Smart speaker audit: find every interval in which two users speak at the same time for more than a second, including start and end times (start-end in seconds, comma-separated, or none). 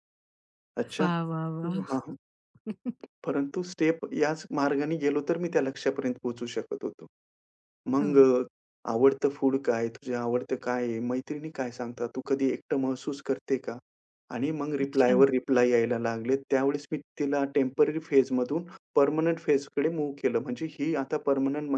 none